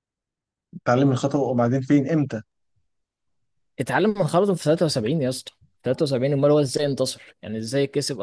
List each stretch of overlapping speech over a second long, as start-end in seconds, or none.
none